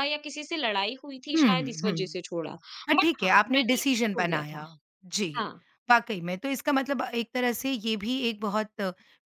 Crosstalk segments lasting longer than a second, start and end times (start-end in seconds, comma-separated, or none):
3.0-4.6